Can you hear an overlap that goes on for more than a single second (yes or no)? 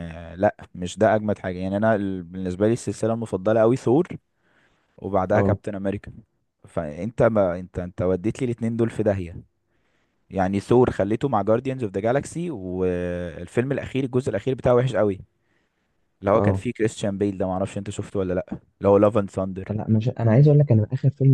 no